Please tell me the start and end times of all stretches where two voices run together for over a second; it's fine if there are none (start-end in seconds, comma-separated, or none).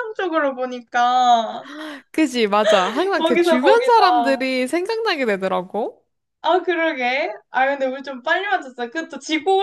3.1-4.5